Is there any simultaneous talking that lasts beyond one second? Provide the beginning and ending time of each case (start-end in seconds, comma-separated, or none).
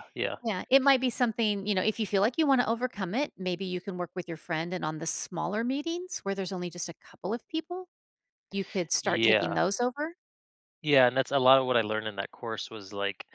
none